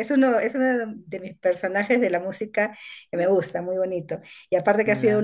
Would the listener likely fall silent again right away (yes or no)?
yes